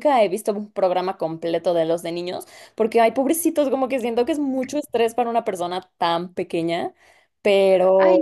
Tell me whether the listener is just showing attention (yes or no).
no